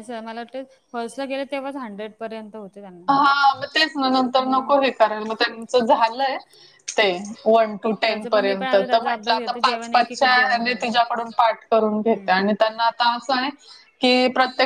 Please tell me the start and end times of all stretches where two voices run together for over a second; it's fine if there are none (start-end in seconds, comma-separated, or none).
8.1-11.0